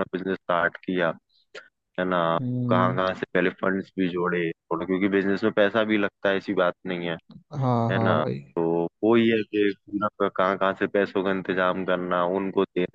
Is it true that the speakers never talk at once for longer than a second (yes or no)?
yes